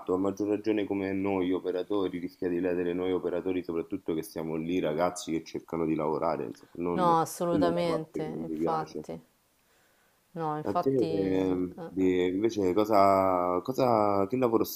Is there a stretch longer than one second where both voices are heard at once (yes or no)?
yes